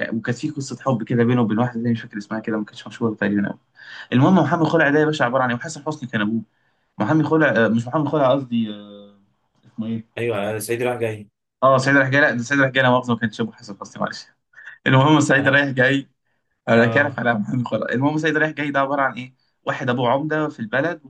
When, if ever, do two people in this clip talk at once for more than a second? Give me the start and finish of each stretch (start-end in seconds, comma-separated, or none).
none